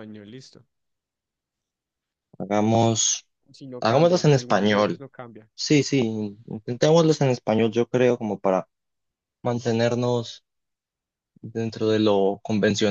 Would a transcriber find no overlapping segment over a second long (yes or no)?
no